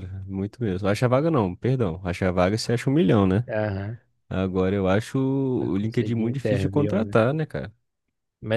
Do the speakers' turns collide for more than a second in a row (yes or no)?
yes